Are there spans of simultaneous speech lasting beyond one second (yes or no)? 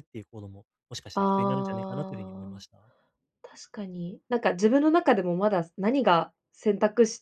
yes